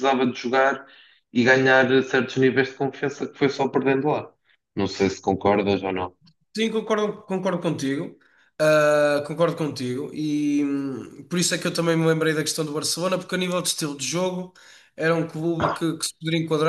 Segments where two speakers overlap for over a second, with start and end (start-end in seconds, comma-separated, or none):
none